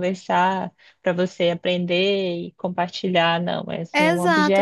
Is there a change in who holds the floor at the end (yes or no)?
no